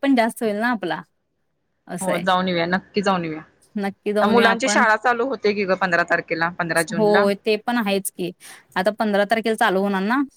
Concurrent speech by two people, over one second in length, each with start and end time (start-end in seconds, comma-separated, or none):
none